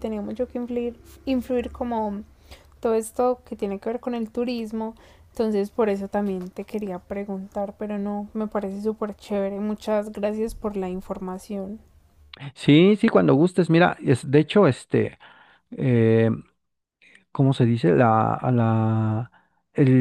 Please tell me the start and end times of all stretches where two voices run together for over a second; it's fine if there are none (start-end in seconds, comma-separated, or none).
none